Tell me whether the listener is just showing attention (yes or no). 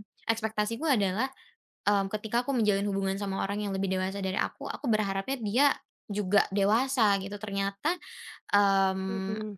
yes